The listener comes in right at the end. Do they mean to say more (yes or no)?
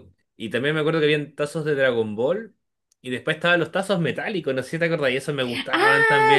yes